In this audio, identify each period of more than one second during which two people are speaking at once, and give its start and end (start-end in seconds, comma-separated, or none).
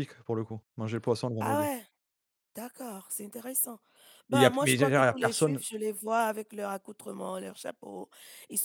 4.3-5.6